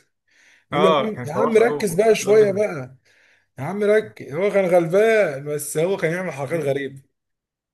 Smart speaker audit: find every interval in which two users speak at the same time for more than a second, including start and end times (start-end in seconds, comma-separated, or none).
0.7-2.6